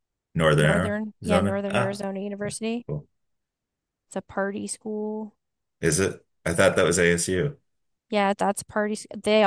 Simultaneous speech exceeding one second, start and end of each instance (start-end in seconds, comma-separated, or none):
0.6-2.0